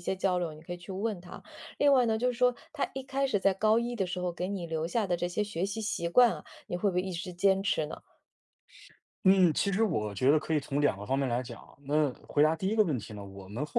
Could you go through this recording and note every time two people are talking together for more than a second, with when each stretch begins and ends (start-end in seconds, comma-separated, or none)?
none